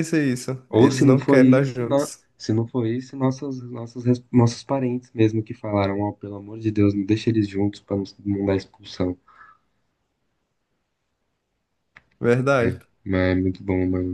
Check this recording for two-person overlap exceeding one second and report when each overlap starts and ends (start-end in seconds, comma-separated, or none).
0.7-2.2